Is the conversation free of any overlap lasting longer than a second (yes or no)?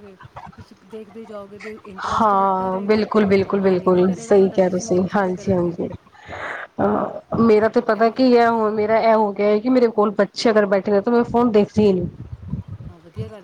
no